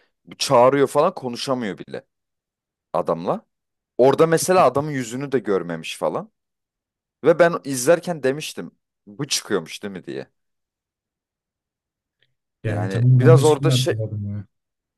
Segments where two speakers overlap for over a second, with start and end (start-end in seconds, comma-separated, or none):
12.6-13.9